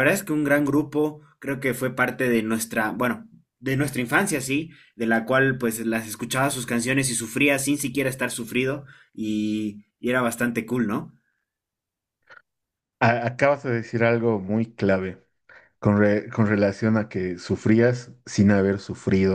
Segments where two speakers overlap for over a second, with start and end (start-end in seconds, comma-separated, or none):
none